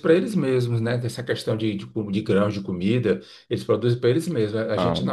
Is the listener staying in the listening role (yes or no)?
yes